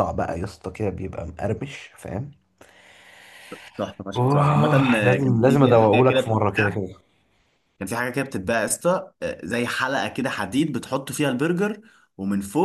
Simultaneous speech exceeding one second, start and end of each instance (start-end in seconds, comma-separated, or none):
4.2-6.8